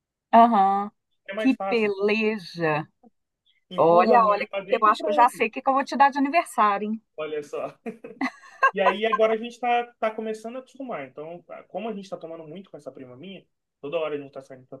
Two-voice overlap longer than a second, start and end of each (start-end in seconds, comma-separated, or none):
3.8-5.5